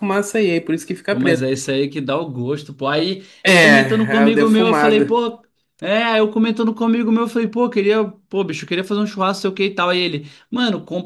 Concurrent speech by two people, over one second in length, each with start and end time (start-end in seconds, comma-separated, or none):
3.4-5.2